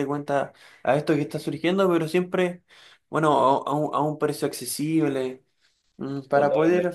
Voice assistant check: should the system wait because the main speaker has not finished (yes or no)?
yes